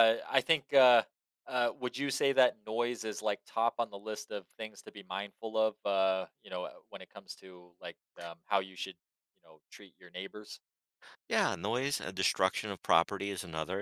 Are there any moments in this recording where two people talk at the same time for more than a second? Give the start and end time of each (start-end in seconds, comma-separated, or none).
none